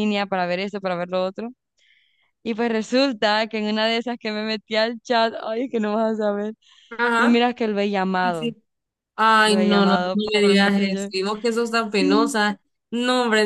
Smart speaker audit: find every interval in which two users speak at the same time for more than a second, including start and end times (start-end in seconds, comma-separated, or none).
9.4-11.1